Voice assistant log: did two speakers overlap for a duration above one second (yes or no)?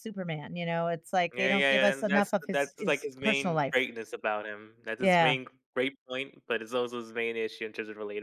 yes